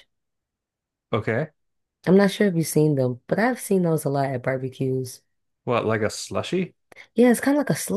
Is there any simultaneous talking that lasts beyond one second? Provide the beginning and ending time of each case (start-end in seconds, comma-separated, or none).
none